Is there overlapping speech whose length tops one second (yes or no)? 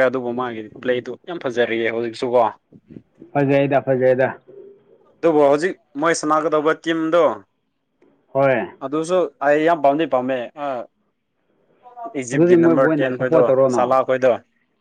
yes